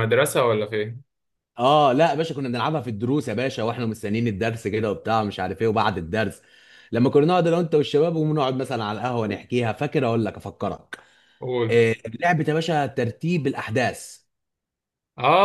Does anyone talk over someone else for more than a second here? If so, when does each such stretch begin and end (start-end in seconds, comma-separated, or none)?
none